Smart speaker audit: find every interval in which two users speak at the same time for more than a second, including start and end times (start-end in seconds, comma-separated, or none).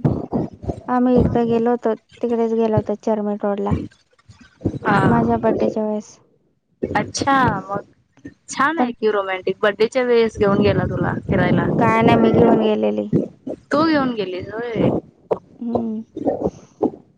none